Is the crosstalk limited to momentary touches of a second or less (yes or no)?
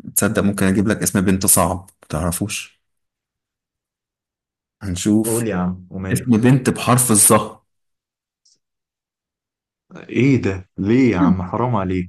yes